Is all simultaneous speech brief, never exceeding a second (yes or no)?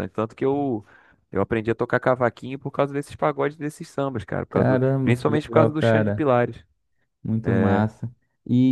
no